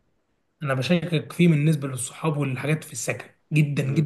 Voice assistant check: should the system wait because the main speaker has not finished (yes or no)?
yes